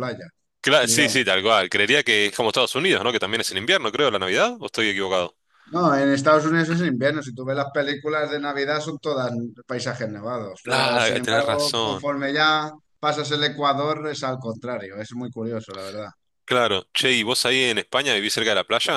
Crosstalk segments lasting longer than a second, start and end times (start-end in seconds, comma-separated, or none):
10.6-12.1